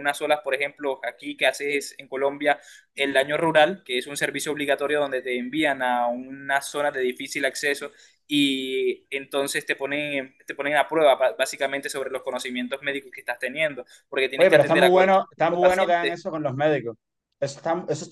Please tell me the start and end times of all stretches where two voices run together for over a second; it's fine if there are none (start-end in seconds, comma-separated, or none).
14.4-16.2